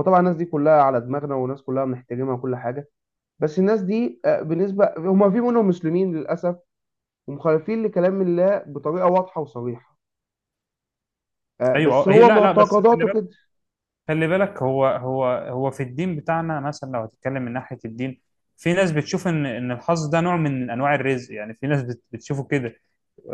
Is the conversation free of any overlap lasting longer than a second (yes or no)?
no